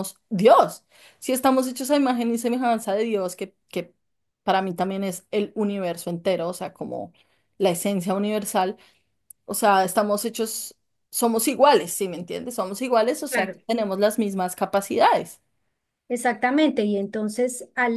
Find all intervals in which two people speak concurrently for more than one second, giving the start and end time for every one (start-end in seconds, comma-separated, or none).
none